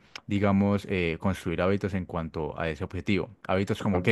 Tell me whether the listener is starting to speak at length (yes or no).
no